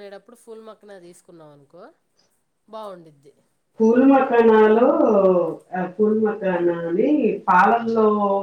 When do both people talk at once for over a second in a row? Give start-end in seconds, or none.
none